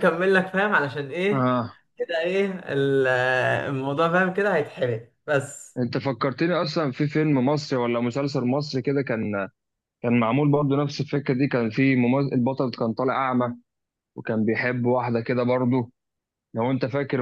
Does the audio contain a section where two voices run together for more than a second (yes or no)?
no